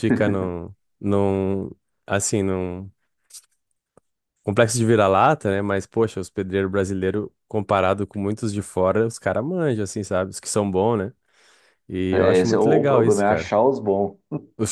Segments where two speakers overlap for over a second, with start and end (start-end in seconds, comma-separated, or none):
12.1-13.5